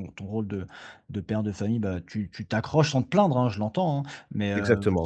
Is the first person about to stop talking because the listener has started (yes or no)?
no